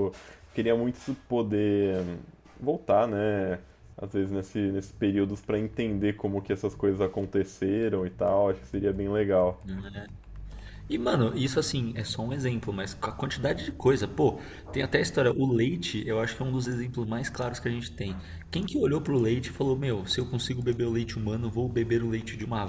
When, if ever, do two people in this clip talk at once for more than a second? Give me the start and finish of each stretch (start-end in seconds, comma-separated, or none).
none